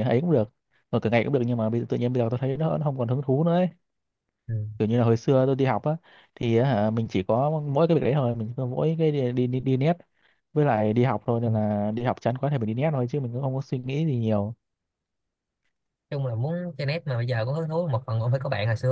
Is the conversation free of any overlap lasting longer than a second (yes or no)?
yes